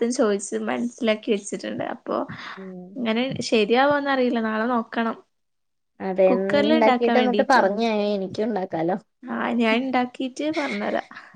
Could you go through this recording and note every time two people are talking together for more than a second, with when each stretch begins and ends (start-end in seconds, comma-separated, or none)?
none